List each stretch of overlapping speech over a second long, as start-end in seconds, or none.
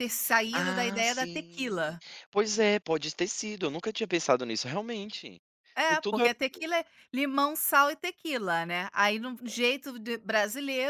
0.5-2.0